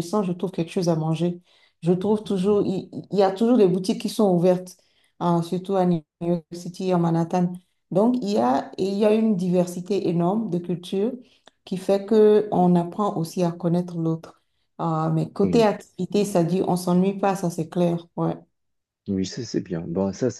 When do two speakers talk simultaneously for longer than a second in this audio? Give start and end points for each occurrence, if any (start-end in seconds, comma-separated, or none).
none